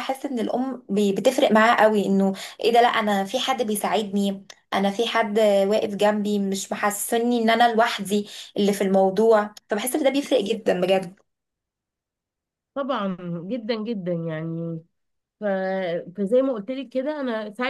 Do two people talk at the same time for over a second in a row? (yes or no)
no